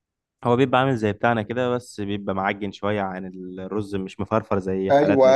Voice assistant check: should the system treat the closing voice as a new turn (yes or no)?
yes